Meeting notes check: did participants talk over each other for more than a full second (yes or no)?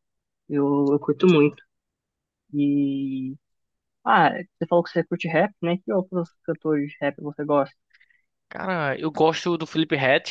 no